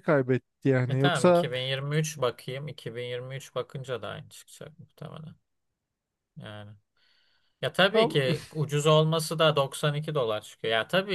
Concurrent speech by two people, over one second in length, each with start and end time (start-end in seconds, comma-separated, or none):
none